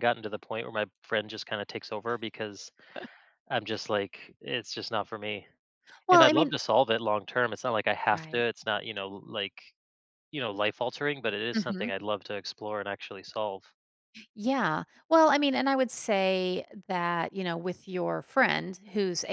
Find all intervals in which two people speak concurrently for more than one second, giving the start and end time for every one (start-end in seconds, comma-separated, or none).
none